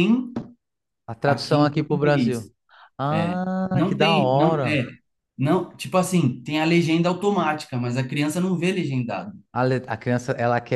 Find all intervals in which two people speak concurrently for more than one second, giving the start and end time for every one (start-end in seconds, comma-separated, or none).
1.2-2.5, 3.1-4.8